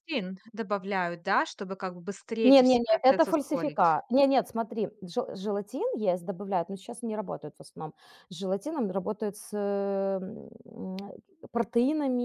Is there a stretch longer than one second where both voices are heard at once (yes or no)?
yes